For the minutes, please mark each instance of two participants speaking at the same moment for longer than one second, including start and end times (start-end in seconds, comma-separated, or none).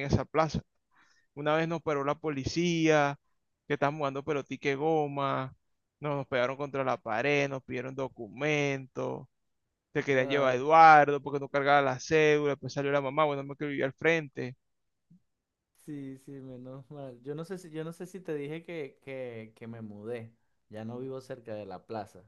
none